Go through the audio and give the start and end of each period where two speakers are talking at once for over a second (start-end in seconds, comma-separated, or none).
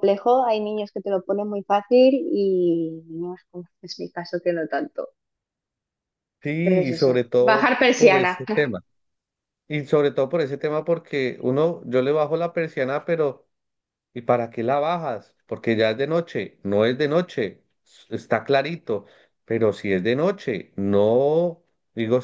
6.6-8.4